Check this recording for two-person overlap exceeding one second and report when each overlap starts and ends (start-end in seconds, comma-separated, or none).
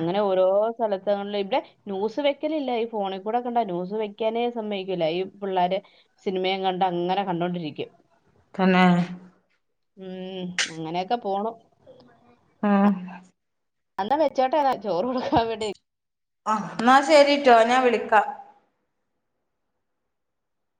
none